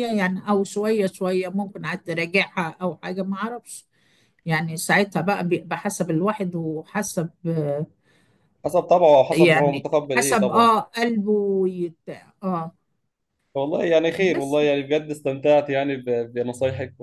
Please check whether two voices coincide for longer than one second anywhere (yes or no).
yes